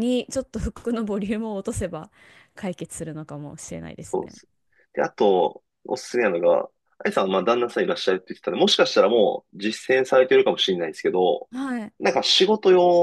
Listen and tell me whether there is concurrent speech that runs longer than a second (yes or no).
no